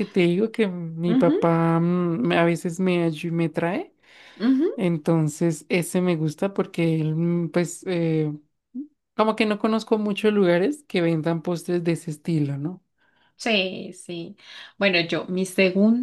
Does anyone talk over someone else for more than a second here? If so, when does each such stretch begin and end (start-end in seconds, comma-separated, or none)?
none